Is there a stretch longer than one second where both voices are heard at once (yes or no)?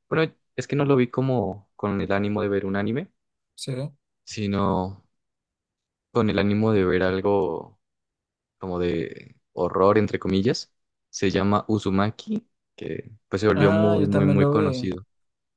yes